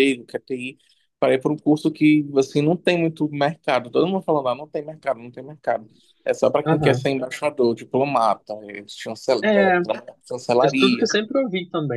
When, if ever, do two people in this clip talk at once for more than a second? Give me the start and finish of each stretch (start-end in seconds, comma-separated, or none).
none